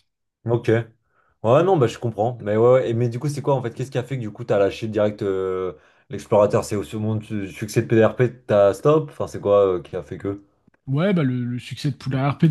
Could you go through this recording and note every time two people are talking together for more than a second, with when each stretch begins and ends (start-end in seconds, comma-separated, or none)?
none